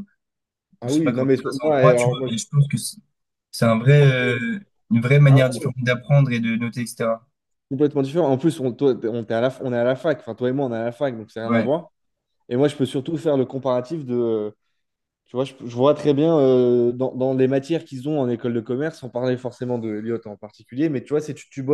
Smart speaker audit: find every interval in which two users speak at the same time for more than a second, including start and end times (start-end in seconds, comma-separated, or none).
0.8-2.3